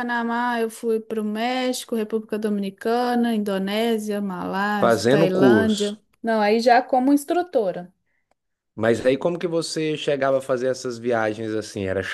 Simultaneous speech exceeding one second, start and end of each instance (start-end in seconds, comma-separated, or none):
4.8-6.0